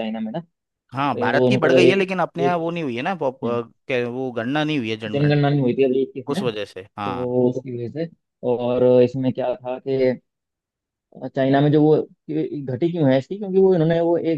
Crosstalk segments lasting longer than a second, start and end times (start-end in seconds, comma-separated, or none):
1.2-2.6